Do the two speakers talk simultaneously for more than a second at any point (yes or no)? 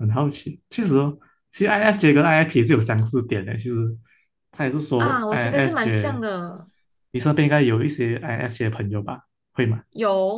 yes